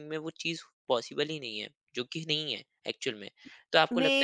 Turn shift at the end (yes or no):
no